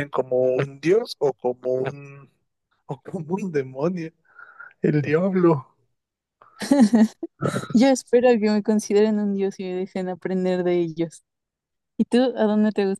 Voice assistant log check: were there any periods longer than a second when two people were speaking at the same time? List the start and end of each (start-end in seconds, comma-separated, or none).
none